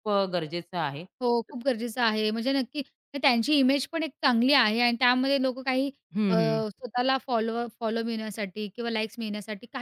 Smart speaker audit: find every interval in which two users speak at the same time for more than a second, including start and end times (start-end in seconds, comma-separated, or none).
none